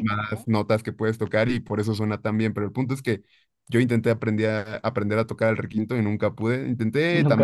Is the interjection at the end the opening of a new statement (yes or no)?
no